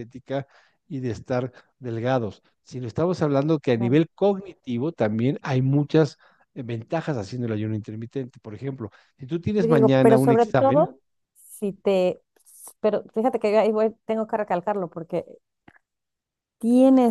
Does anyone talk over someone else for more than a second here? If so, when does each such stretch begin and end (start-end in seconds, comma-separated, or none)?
9.6-10.9